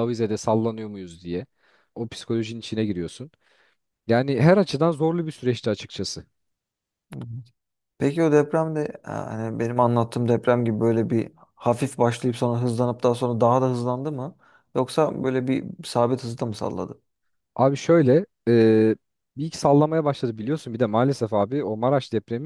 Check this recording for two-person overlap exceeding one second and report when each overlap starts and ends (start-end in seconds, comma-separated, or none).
none